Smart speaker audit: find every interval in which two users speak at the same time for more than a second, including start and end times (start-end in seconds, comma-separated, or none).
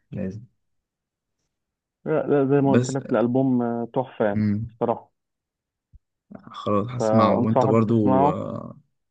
7.0-8.4